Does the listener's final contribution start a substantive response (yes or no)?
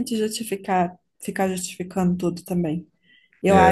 no